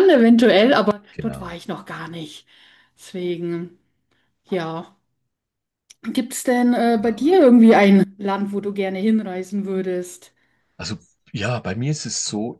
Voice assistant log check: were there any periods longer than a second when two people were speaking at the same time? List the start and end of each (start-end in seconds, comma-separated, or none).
none